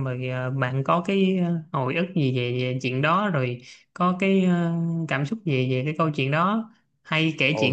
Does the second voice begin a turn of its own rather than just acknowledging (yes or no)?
no